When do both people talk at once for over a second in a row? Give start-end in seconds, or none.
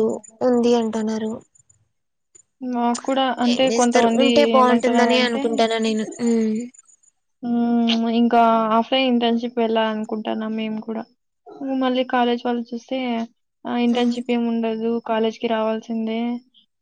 3.5-5.4